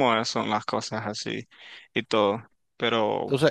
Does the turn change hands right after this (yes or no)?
yes